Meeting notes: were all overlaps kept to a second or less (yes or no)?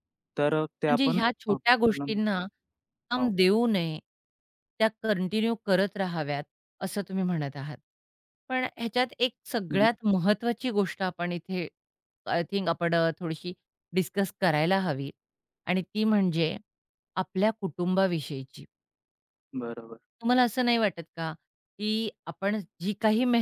no